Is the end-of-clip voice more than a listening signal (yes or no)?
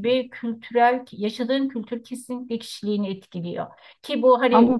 no